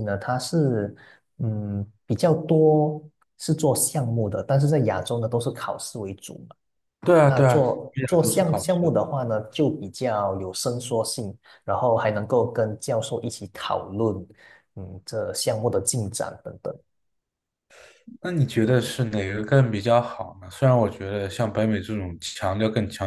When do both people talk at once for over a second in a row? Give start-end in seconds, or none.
7.2-8.9